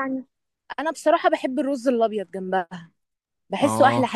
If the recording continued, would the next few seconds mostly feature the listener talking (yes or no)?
yes